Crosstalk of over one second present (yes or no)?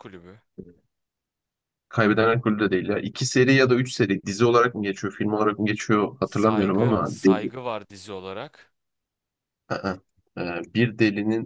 yes